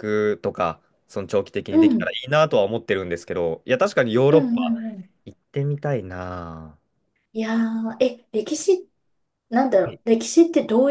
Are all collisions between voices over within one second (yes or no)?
yes